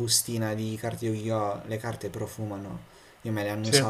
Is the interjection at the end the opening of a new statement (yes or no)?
no